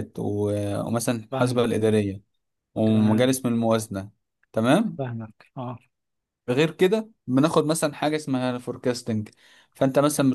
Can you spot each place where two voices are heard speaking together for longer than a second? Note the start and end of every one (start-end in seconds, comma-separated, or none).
none